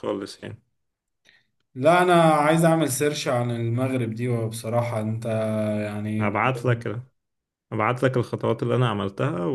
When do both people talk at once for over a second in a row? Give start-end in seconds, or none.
none